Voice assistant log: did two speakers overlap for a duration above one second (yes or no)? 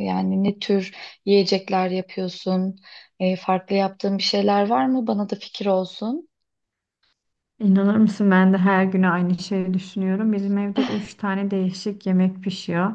no